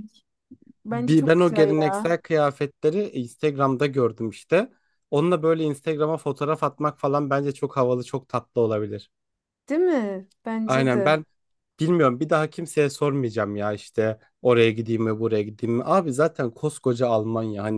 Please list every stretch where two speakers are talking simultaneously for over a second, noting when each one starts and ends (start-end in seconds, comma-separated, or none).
0.9-2.2